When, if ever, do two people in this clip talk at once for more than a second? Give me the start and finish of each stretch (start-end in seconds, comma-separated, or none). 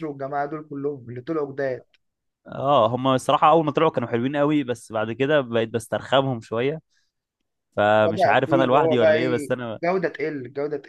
8.0-9.8